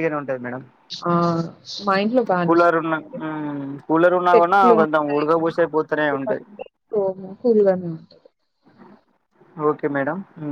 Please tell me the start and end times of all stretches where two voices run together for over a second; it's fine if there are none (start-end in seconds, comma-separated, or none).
4.3-6.3